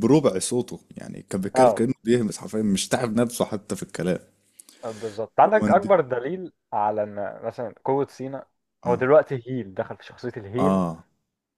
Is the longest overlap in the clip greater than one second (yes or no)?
no